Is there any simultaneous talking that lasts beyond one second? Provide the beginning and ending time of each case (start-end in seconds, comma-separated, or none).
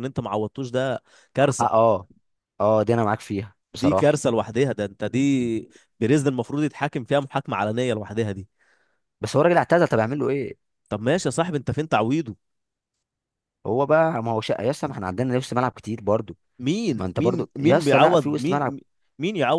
16.9-18.7